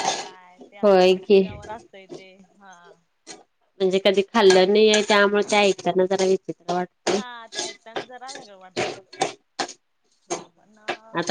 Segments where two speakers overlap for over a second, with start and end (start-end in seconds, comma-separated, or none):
none